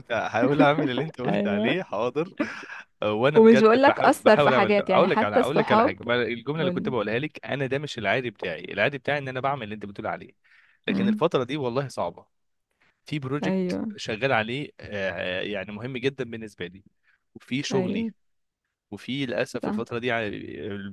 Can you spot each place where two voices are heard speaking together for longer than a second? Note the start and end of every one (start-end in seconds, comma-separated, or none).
3.4-6.0